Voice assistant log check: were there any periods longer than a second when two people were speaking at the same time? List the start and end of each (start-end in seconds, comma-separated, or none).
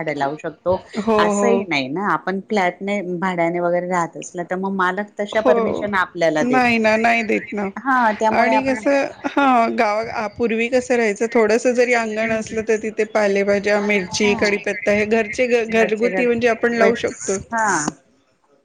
15.7-17.4